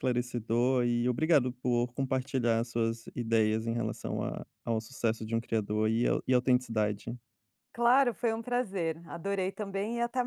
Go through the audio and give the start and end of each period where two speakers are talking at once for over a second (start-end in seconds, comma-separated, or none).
none